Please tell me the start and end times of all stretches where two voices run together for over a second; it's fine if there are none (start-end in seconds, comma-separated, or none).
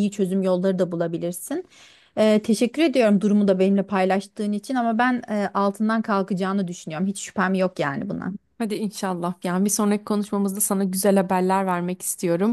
none